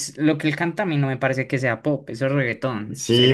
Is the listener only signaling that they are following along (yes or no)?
no